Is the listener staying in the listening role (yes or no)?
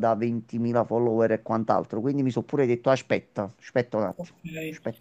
no